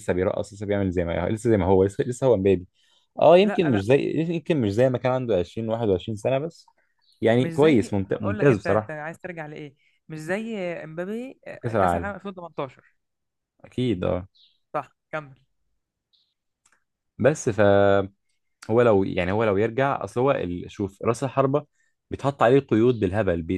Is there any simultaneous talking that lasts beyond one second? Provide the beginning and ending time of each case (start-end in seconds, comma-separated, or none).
7.4-9.0